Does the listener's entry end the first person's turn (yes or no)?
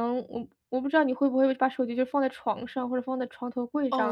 yes